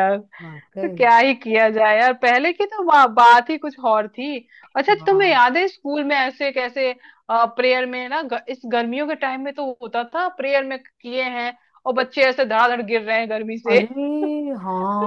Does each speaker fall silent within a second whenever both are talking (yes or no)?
yes